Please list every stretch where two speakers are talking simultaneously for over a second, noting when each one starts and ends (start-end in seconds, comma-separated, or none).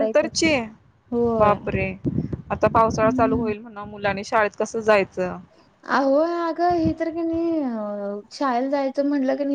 none